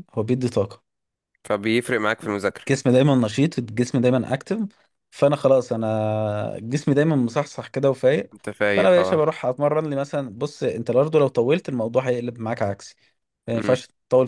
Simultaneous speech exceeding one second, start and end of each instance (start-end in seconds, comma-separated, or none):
none